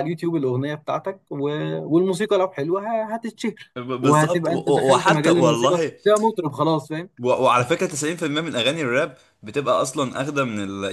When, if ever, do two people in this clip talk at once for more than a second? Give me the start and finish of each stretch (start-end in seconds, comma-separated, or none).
3.8-6.0